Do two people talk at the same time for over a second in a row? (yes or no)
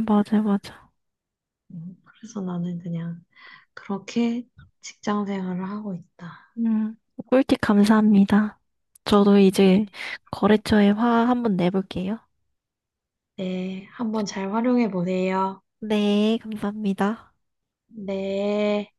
no